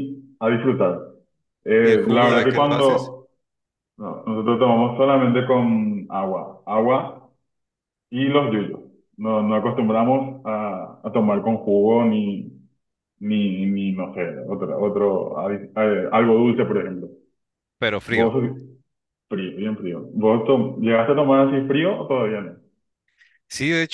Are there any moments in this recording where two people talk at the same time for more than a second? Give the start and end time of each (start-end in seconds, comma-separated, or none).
1.8-3.1